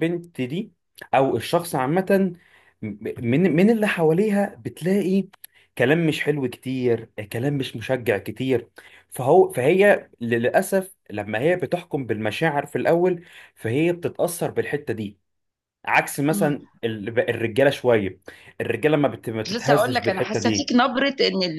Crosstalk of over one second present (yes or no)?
yes